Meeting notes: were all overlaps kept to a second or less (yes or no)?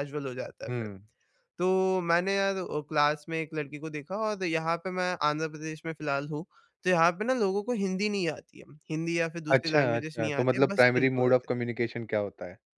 no